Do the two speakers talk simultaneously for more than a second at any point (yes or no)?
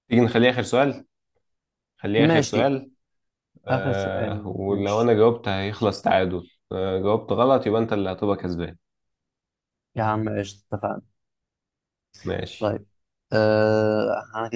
yes